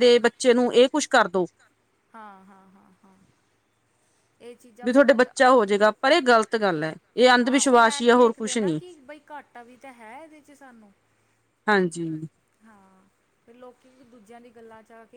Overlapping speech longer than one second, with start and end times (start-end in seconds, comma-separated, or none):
7.4-8.8